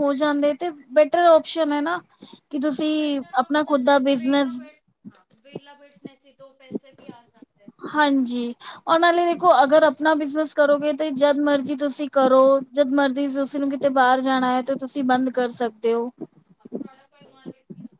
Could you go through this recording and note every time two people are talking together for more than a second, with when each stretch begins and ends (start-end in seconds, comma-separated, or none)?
2.8-4.6